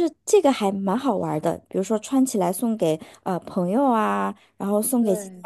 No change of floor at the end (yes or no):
yes